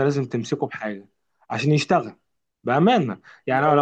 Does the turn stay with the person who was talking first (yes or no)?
yes